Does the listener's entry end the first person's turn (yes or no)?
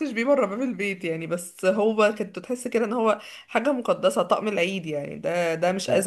no